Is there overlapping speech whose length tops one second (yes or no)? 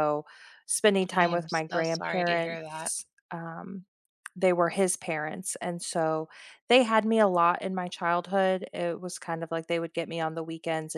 yes